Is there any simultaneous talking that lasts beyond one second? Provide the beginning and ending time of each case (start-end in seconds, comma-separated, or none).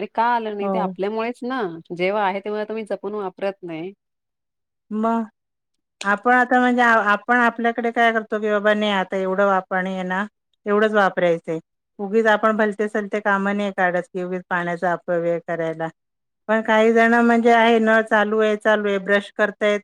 none